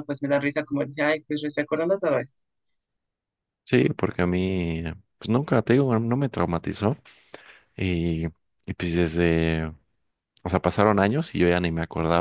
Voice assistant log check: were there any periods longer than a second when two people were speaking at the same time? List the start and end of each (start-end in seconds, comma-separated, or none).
none